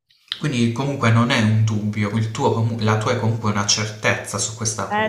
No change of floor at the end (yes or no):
no